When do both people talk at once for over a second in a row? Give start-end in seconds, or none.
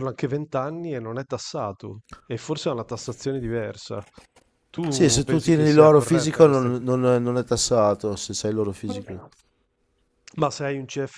4.9-6.8